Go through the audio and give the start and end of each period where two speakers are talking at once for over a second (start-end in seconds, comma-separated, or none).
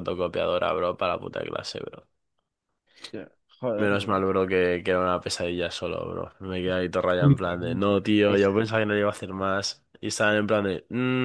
7.2-8.6